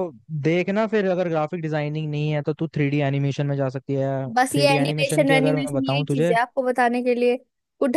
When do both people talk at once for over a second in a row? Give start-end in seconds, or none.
4.5-6.3